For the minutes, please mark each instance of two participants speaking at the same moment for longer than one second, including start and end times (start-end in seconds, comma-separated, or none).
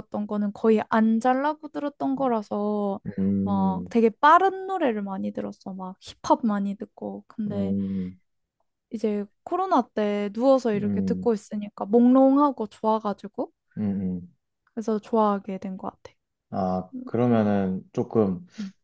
none